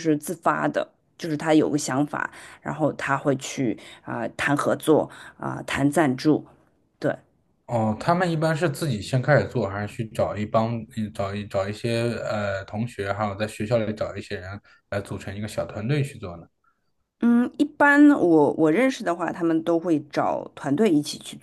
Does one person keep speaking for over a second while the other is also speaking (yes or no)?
no